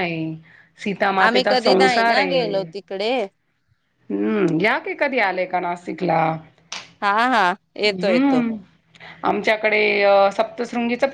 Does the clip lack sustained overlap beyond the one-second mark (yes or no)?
no